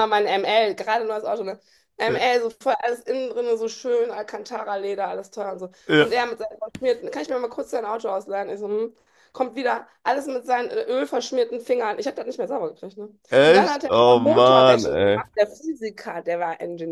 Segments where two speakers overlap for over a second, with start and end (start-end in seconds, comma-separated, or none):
13.4-15.2